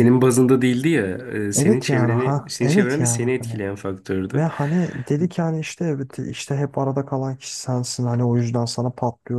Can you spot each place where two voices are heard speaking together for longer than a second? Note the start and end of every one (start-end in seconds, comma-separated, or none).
1.6-3.2